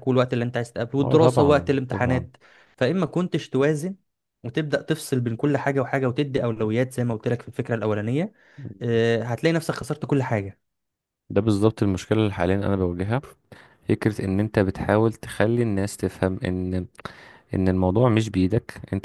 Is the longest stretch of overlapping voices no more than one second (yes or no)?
no